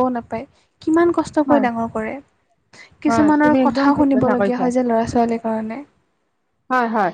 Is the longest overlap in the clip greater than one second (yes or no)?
yes